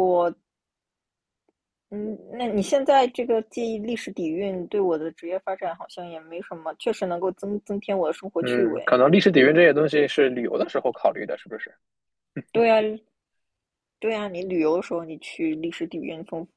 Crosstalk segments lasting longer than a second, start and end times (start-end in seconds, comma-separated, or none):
none